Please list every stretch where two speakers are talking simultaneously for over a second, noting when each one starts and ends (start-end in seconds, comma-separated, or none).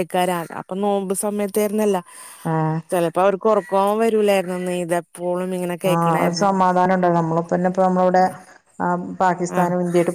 none